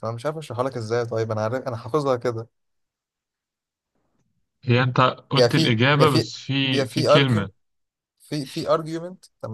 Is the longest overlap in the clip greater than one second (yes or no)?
yes